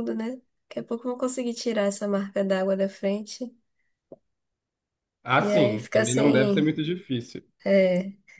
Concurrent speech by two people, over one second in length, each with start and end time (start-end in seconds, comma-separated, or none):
5.4-6.7